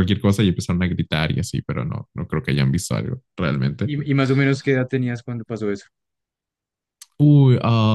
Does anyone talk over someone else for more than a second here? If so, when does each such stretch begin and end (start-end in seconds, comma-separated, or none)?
none